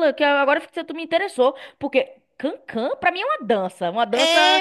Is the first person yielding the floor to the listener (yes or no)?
yes